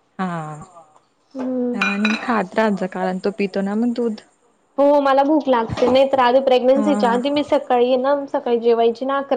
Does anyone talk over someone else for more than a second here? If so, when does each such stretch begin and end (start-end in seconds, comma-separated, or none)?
none